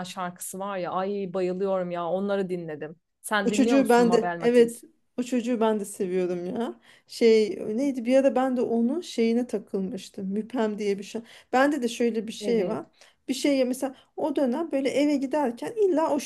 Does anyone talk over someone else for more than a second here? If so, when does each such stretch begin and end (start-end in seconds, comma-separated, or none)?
3.4-4.8